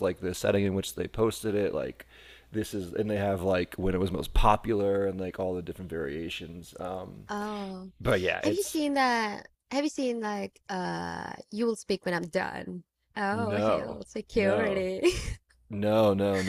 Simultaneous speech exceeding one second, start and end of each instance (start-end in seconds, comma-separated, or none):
13.5-14.8